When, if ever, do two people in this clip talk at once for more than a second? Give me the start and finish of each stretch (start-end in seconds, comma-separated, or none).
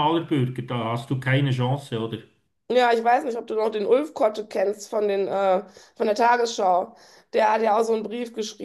none